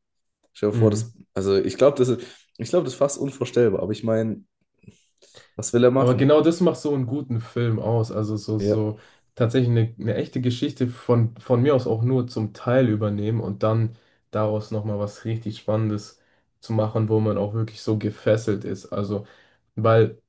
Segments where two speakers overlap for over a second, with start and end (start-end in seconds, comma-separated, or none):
none